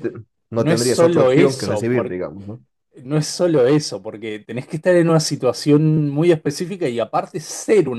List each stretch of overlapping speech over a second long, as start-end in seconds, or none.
0.5-1.9